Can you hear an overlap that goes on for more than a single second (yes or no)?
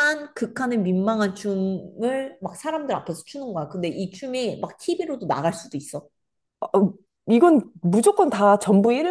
no